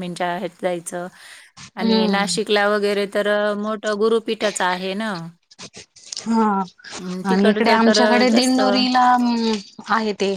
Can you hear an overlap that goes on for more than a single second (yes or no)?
yes